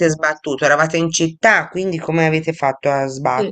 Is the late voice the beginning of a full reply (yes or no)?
yes